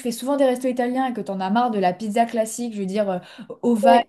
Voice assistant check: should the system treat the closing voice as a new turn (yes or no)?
no